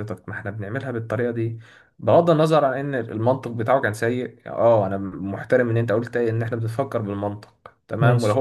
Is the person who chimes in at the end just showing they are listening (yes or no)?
yes